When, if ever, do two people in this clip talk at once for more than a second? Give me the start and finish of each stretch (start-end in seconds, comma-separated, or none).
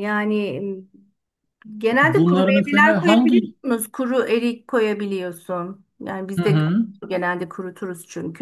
2.0-3.5